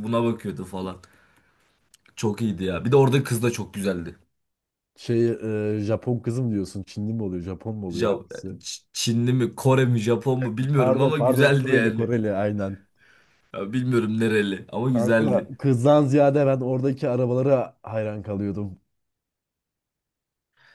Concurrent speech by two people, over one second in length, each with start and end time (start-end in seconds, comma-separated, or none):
10.7-12.1